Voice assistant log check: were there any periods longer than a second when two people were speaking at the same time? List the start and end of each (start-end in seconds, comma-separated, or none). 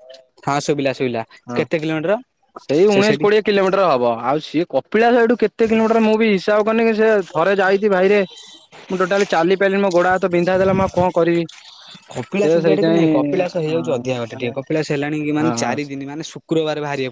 12.4-14.5